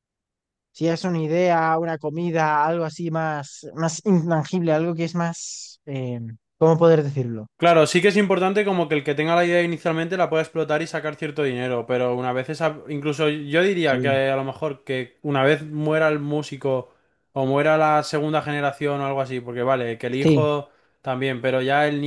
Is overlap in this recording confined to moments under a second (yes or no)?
yes